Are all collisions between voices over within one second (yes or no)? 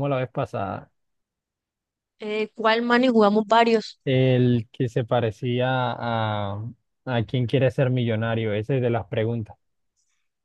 yes